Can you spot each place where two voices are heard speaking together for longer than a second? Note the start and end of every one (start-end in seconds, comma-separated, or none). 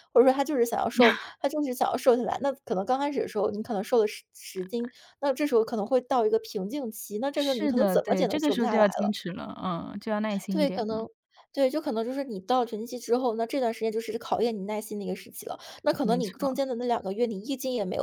7.3-9.1